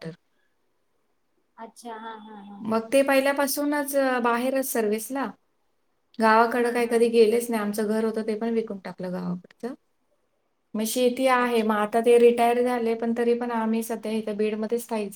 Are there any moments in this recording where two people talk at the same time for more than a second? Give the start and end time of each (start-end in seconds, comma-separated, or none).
none